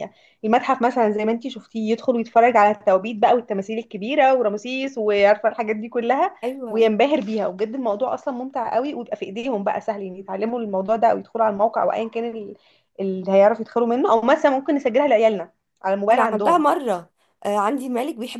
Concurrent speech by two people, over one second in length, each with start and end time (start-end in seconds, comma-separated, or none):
none